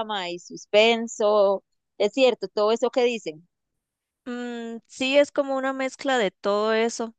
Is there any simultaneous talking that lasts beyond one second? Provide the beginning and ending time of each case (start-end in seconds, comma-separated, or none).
none